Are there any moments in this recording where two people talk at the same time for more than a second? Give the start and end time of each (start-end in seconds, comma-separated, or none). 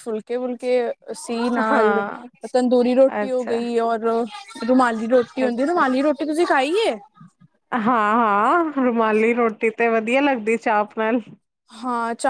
none